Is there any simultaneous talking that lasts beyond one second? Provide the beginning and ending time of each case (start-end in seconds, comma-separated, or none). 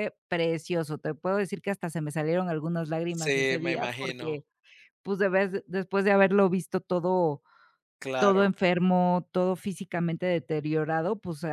3.1-4.4